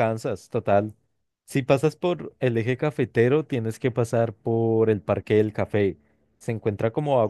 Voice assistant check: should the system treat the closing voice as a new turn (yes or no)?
no